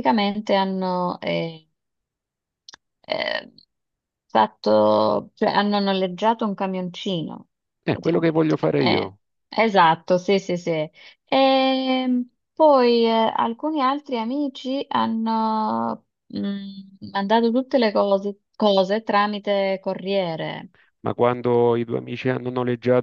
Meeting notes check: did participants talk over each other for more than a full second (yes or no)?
yes